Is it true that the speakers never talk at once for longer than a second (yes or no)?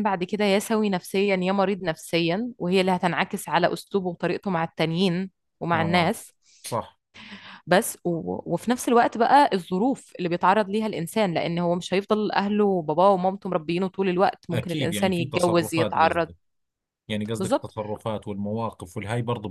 no